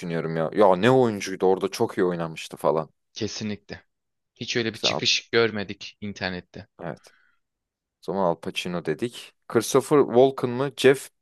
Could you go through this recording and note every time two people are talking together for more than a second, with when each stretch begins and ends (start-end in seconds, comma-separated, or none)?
none